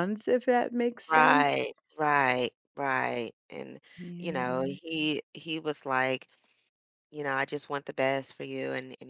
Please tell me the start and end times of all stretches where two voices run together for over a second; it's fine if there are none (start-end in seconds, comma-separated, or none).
none